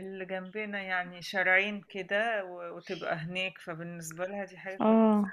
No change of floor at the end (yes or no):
yes